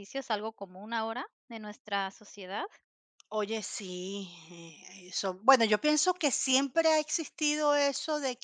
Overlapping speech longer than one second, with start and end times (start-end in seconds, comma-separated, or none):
none